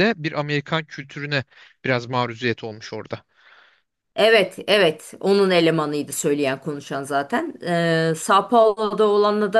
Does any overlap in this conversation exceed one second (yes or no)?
no